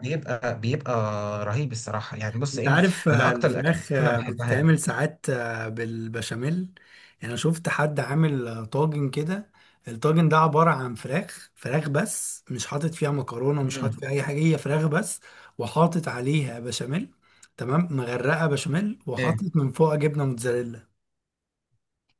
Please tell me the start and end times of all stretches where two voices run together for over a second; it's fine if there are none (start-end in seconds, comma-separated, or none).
2.5-4.7